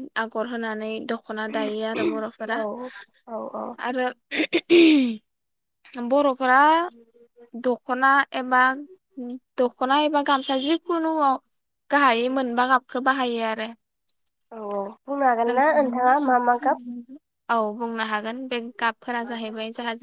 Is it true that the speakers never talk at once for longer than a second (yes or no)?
yes